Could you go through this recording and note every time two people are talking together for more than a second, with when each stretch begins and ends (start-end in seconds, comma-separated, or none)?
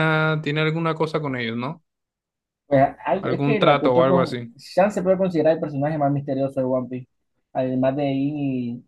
3.2-4.5